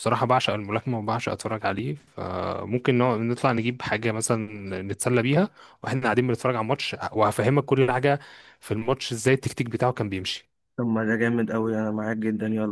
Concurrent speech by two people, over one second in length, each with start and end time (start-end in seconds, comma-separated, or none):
none